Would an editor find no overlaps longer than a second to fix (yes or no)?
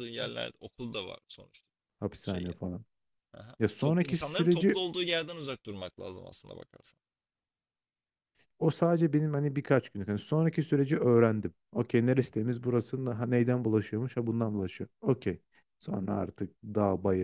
no